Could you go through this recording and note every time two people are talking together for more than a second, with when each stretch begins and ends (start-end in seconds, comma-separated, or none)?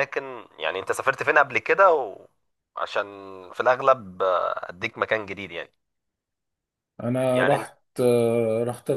none